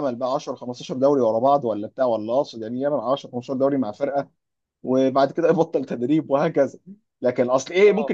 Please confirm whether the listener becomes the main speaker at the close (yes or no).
no